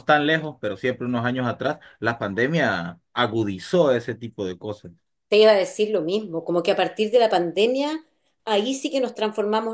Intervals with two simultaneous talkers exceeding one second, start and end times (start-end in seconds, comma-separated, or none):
none